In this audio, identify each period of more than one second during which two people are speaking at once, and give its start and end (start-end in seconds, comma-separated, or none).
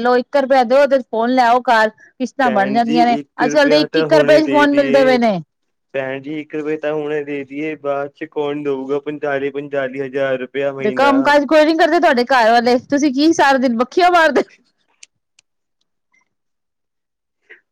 2.4-5.2